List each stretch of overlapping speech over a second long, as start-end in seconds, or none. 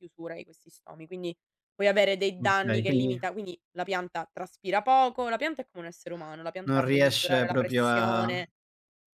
6.6-8.4